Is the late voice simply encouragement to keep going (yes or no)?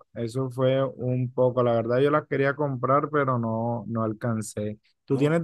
yes